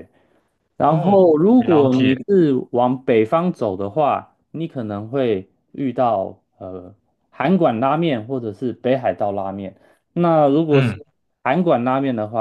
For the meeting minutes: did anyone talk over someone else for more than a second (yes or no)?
yes